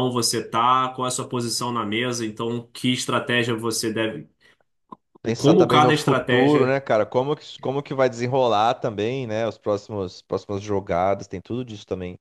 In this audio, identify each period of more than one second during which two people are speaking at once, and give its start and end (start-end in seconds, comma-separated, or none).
5.4-6.8